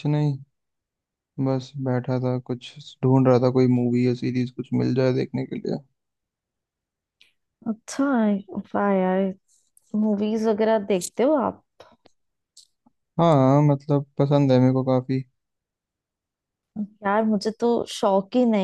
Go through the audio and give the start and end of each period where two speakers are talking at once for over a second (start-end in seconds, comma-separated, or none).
none